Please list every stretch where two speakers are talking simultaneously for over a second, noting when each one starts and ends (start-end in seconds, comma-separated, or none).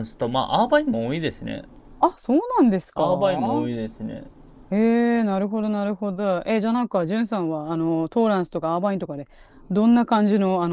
none